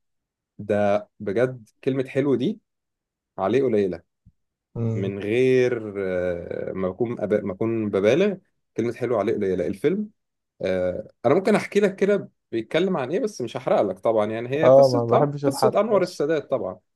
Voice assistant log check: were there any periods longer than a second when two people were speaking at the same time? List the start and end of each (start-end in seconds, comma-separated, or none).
14.6-16.2